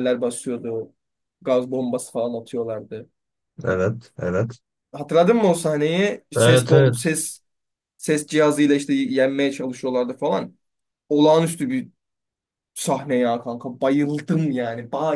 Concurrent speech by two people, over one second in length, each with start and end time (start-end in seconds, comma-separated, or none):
none